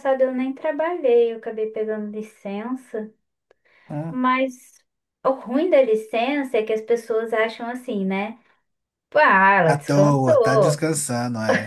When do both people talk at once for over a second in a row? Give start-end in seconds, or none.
9.6-10.9